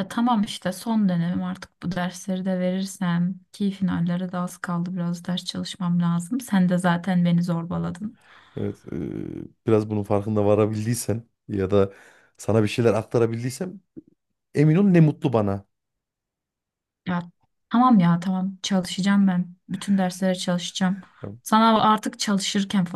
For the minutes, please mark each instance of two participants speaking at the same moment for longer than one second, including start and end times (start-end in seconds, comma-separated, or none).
none